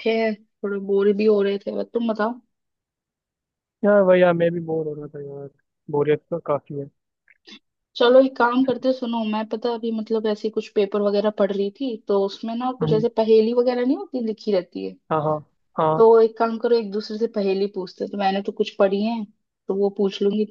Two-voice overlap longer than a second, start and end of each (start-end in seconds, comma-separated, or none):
none